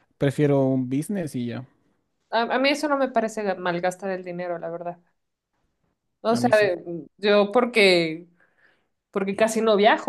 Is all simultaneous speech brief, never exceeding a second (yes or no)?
yes